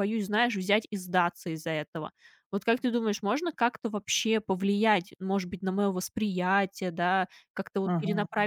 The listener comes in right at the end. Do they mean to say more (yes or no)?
no